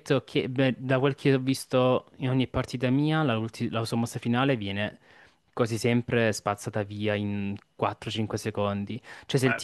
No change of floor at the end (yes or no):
yes